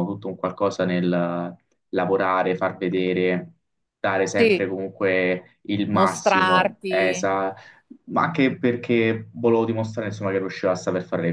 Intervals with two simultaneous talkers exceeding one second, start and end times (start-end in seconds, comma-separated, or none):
5.9-7.3